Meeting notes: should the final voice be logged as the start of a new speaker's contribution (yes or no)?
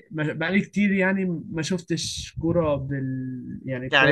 yes